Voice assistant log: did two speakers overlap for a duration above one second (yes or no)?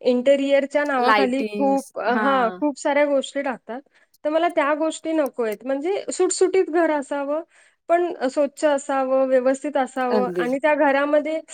yes